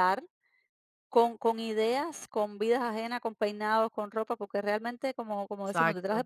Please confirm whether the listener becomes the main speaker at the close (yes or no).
no